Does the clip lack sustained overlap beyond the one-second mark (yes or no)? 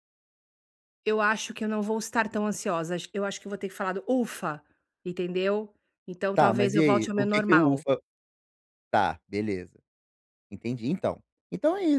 no